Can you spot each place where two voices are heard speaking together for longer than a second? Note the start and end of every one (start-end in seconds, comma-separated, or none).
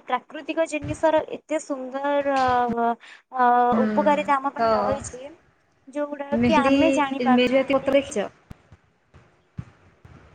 6.4-7.9